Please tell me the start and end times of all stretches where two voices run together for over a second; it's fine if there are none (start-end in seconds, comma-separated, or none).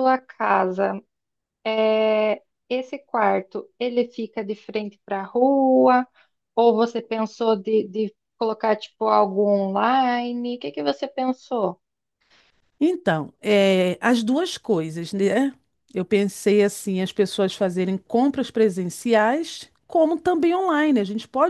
none